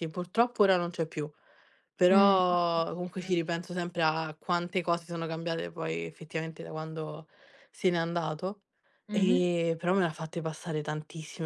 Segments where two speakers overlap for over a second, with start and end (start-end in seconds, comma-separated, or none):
2.1-3.5